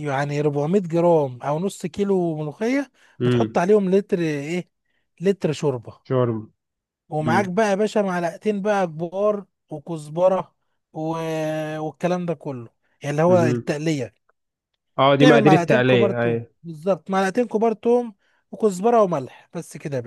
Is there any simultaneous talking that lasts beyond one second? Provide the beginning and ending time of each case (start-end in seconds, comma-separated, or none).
15.2-16.5